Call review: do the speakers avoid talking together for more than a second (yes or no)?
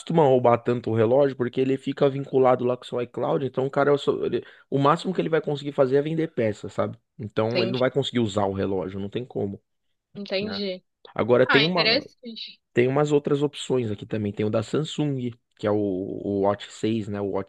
yes